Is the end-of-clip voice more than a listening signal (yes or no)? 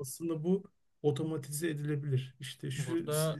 no